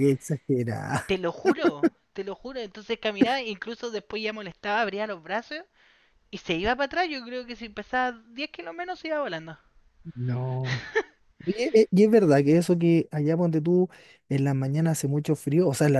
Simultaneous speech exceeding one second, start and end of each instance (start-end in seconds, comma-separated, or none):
none